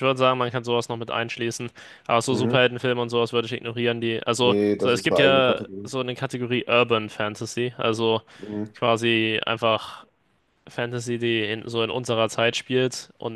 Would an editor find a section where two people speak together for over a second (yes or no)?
yes